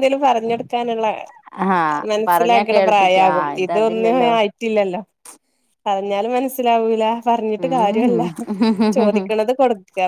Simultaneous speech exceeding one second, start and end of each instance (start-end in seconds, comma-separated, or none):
2.1-4.3